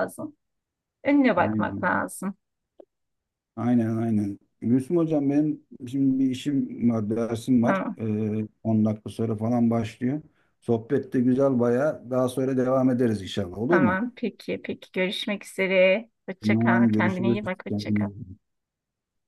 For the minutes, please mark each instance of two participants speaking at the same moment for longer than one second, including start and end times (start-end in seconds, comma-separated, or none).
16.4-18.1